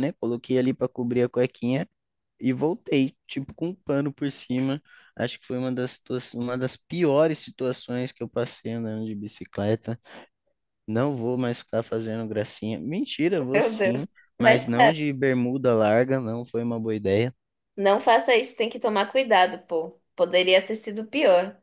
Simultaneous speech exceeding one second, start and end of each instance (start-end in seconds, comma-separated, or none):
13.5-15.0